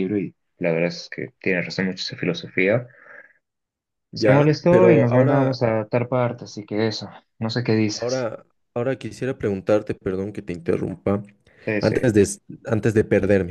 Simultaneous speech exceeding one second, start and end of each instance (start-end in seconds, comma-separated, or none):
4.1-5.6